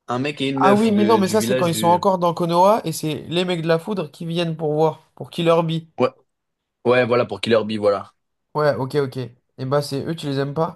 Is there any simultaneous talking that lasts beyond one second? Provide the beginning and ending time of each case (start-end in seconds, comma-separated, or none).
0.6-2.0